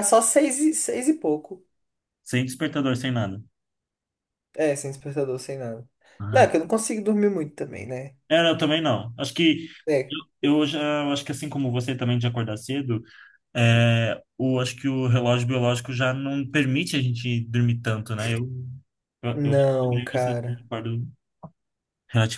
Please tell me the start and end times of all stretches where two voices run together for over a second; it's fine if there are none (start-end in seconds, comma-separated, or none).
19.3-20.7